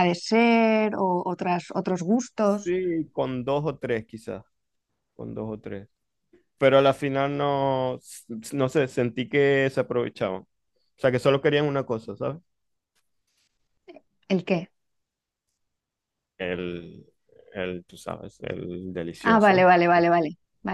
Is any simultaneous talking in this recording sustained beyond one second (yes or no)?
no